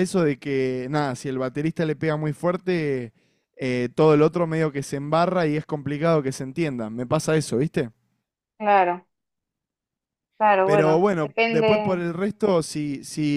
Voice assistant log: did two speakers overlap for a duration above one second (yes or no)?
yes